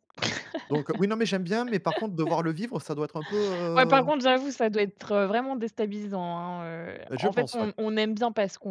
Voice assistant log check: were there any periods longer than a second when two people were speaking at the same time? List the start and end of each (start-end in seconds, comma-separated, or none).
none